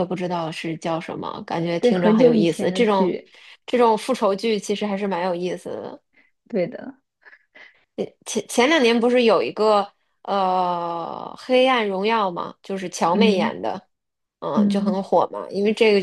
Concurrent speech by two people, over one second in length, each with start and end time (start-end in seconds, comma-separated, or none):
1.8-3.2